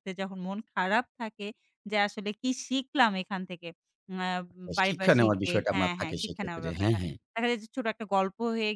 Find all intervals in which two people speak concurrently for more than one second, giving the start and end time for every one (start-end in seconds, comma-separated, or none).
4.9-7.0